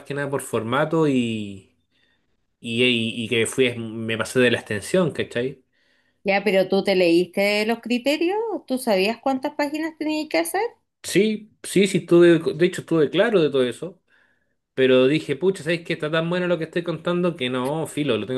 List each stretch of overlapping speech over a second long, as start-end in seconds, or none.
none